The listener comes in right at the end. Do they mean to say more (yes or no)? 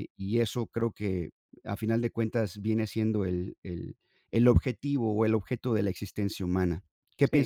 yes